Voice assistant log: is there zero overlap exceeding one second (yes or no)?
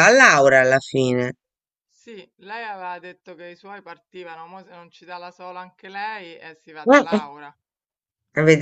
yes